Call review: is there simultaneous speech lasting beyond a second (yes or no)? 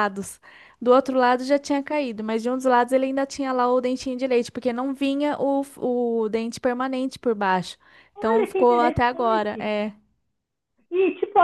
yes